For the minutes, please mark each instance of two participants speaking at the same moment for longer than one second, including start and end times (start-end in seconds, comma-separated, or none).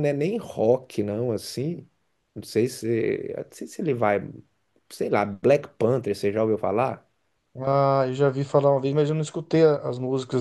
none